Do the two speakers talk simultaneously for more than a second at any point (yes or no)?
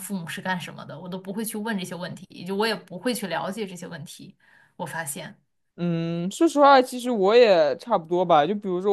no